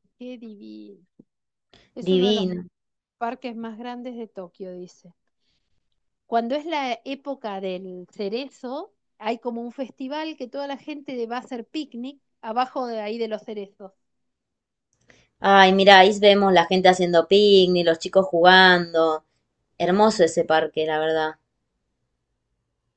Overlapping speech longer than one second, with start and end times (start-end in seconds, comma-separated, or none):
none